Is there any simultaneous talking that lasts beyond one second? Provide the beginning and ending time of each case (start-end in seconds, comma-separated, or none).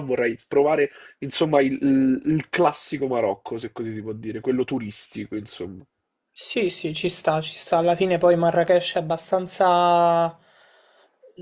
none